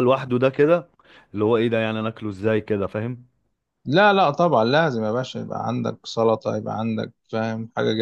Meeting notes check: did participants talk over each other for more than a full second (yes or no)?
no